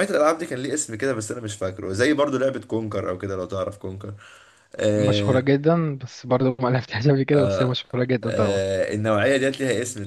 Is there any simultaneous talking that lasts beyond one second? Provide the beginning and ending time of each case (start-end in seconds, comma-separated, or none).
none